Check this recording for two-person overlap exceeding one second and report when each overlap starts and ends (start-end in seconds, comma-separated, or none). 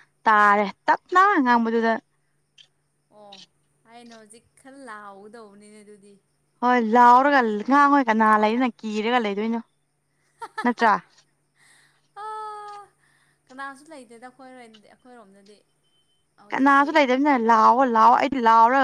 none